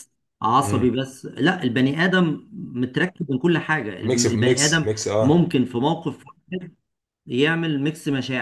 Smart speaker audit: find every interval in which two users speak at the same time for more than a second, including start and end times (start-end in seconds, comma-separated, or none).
4.0-5.4